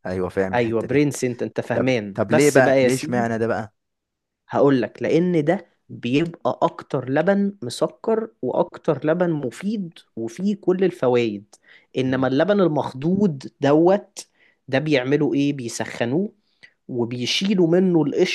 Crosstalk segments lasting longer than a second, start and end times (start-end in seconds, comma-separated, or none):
1.7-3.3